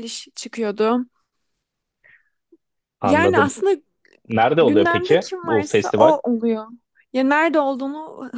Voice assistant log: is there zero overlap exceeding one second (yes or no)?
no